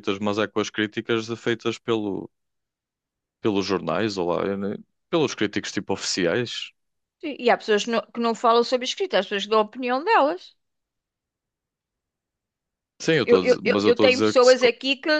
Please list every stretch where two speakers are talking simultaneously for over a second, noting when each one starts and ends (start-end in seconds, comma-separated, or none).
13.2-14.6